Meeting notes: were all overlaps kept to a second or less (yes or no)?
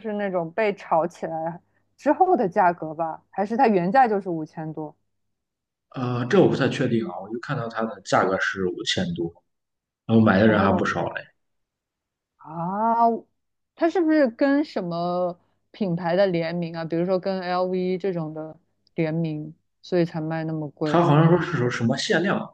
yes